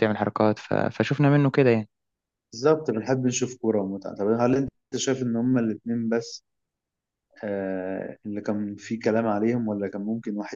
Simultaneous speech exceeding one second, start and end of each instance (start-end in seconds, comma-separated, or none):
none